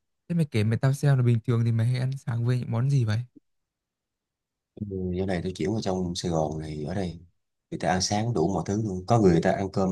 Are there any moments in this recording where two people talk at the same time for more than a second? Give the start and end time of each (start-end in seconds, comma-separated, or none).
none